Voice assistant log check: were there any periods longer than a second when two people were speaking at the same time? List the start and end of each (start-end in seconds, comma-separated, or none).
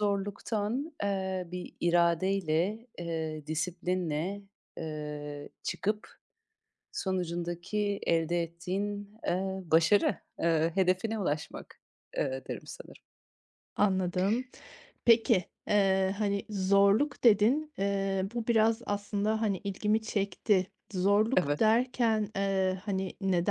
none